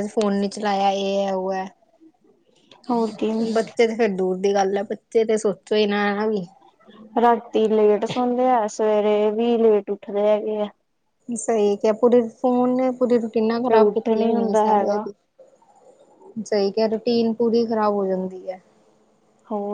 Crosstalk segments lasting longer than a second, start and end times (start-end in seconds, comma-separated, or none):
13.7-15.0